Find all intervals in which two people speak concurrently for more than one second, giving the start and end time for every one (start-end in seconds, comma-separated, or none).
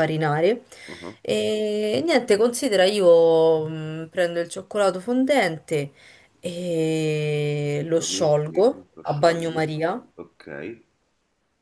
8.0-9.6